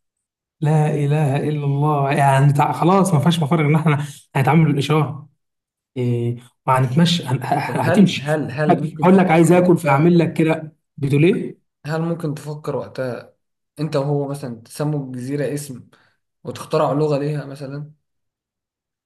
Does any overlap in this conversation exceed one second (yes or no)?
yes